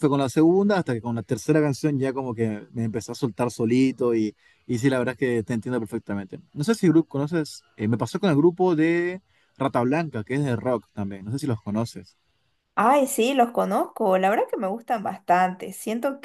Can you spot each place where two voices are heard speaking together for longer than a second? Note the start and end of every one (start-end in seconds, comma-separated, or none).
none